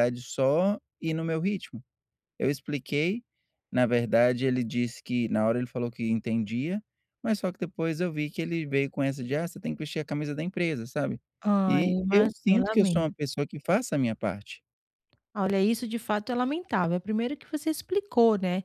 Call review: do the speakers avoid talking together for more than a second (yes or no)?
no